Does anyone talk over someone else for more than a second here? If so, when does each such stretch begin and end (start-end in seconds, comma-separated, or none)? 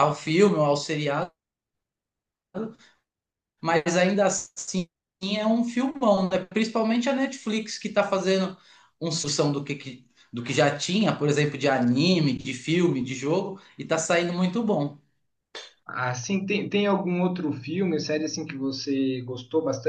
none